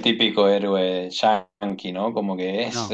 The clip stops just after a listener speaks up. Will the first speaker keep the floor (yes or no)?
yes